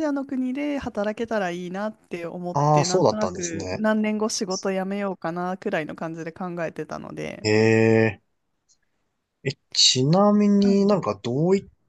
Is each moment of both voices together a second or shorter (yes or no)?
no